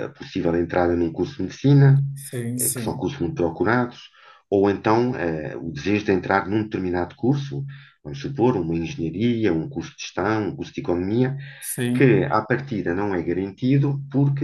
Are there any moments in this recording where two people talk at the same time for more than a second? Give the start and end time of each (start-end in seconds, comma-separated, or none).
none